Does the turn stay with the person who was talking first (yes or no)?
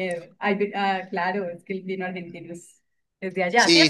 no